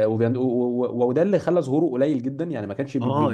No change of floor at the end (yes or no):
no